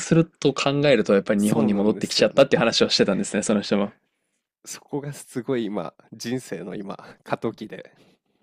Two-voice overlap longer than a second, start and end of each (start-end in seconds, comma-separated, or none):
1.4-2.7